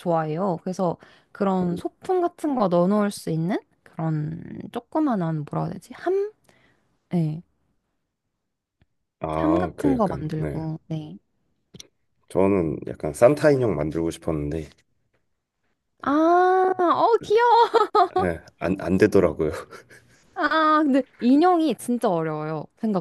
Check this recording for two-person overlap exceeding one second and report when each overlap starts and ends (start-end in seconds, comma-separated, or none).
9.4-10.6